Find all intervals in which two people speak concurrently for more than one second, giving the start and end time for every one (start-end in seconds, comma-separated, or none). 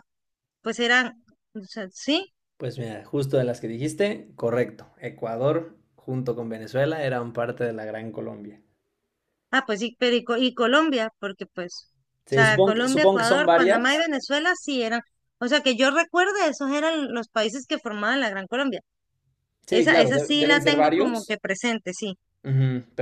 12.3-14.1, 19.7-21.3